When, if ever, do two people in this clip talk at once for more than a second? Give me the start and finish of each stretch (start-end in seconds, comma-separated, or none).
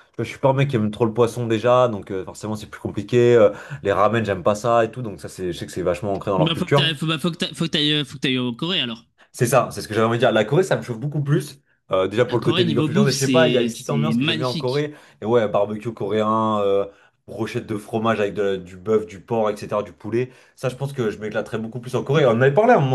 12.3-14.9